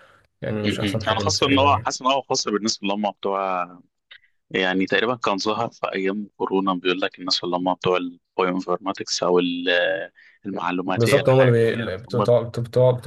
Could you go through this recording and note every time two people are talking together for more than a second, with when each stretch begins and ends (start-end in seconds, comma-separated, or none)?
0.5-1.9, 10.9-12.3